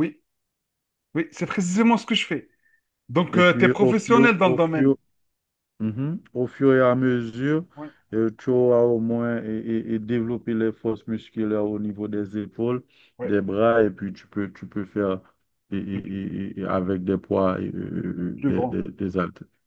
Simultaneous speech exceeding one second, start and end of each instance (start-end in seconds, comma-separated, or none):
3.3-5.0